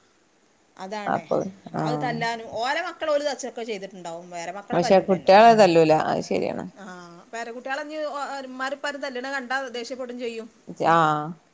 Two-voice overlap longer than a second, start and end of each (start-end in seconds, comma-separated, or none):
4.8-6.6